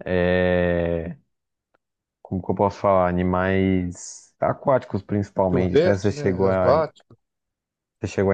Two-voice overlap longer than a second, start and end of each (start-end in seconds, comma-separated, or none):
5.5-6.7